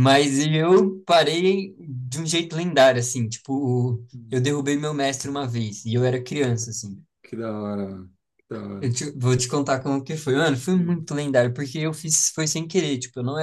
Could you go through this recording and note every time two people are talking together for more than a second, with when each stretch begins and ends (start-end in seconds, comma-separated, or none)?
none